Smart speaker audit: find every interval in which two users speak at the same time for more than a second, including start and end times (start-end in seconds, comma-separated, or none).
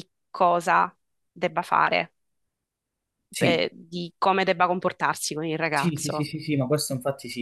none